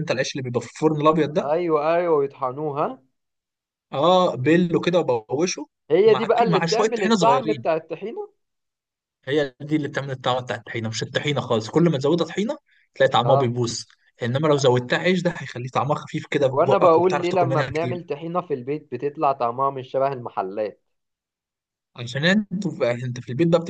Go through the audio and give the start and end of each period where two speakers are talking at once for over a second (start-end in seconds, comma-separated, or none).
6.1-7.7, 16.5-18.0